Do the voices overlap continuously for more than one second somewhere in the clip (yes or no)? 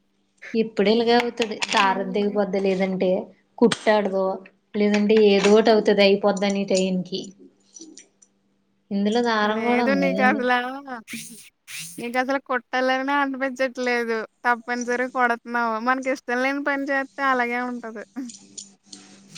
no